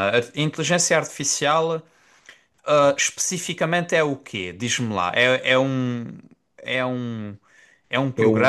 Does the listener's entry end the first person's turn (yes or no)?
no